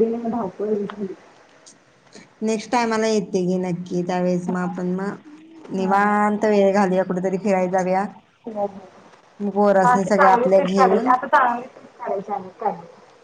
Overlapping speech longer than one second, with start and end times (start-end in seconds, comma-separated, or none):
9.4-11.1